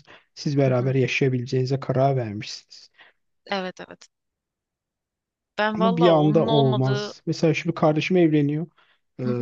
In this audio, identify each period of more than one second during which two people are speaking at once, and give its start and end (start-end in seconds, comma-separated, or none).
5.8-7.1